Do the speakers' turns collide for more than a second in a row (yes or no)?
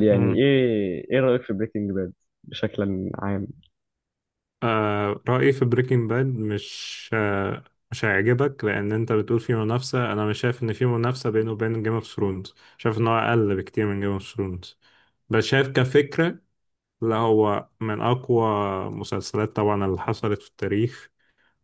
no